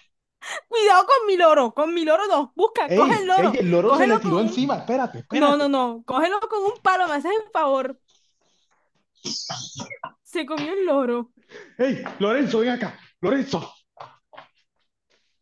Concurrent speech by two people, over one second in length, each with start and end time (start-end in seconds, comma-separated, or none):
2.9-4.6